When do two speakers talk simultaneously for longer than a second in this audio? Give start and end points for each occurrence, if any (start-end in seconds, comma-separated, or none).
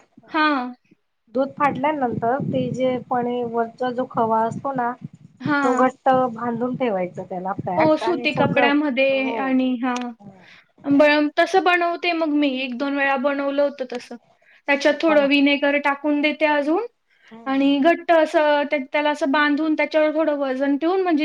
7.8-9.4